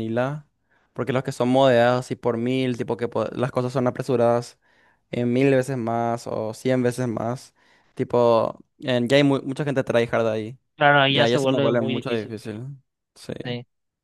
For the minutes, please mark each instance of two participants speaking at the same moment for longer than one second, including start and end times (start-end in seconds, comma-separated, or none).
11.1-12.3